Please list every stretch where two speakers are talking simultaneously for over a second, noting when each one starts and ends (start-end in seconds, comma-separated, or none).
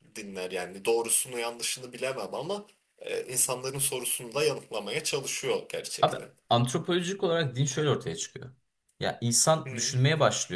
none